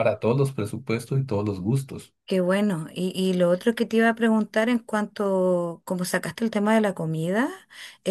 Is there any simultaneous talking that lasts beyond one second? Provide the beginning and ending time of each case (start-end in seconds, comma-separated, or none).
none